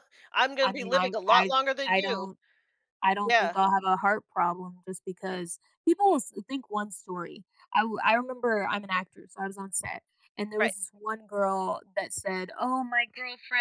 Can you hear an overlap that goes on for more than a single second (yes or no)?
yes